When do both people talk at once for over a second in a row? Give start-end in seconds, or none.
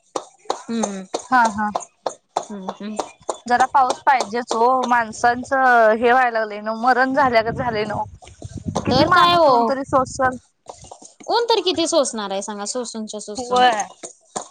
none